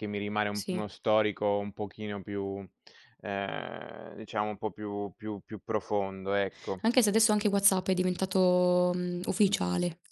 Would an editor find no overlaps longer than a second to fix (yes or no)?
yes